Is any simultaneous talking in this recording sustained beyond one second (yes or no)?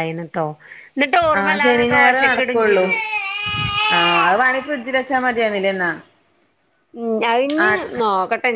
yes